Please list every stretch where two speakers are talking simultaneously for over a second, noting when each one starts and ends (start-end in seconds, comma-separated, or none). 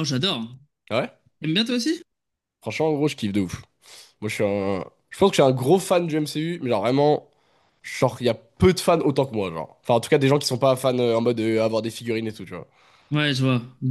none